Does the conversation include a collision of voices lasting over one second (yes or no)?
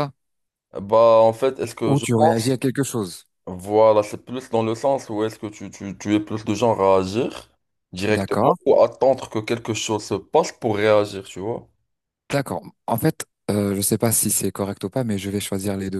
no